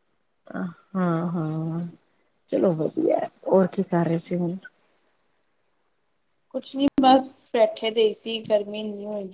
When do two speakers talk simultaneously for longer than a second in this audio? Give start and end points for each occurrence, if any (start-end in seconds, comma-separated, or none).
none